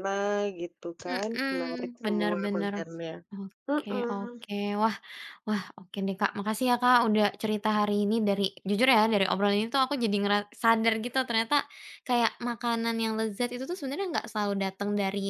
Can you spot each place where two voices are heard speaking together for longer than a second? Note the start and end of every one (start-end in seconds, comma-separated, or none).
1.1-2.7